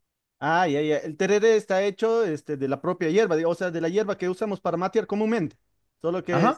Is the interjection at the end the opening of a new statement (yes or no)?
yes